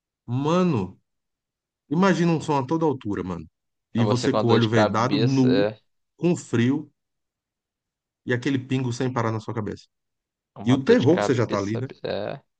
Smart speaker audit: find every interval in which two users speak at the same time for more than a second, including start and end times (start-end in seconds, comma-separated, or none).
4.0-5.7, 10.6-11.9